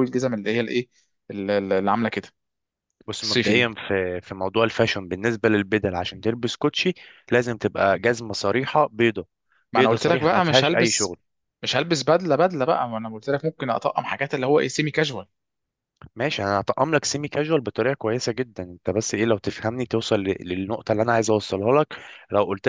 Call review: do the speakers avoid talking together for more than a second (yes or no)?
no